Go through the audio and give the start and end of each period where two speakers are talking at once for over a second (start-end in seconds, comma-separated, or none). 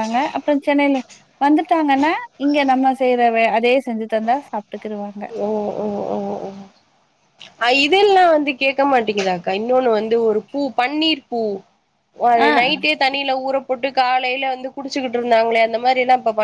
none